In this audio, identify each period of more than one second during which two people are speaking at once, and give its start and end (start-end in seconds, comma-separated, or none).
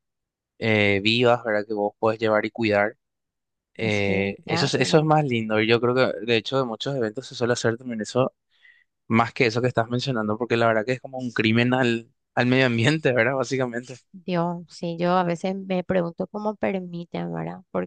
3.9-5.1